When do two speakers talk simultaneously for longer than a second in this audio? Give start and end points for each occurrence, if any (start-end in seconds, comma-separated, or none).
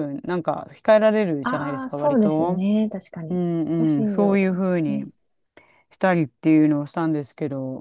1.4-2.6, 3.3-5.0